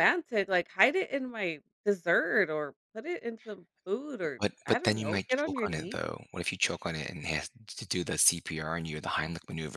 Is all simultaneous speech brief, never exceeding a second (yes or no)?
no